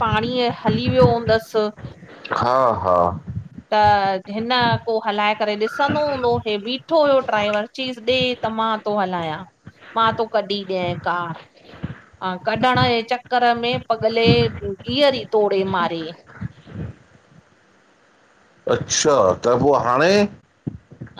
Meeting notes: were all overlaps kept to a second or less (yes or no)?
yes